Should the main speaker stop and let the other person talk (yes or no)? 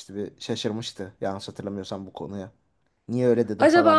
yes